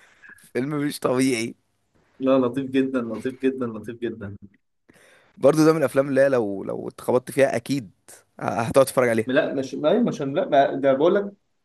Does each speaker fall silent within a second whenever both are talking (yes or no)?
yes